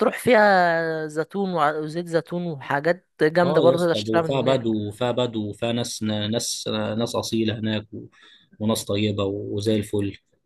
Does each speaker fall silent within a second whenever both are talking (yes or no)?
no